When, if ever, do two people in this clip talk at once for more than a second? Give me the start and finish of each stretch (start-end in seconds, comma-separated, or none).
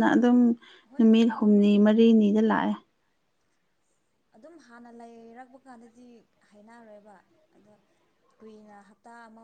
none